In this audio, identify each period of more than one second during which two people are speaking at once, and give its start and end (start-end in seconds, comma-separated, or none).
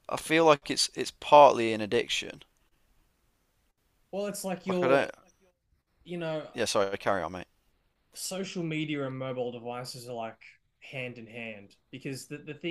none